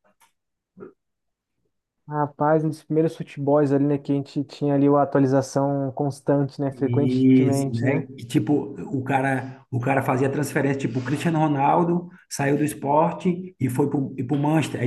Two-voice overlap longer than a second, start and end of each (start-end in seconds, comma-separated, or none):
6.7-8.1